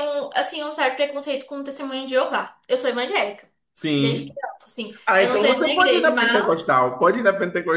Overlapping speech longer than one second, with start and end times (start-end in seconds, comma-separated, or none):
5.1-6.7